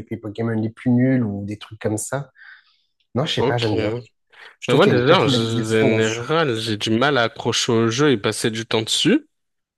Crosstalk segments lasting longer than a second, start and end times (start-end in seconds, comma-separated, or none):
4.8-6.2